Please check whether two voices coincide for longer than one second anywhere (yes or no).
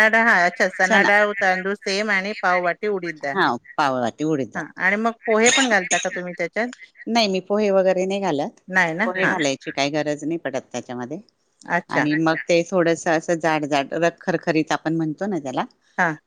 yes